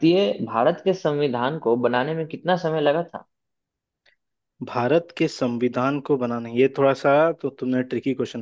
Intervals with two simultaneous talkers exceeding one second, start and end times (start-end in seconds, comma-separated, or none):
none